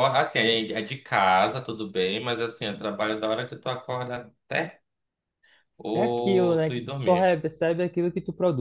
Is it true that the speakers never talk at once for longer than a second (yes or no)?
no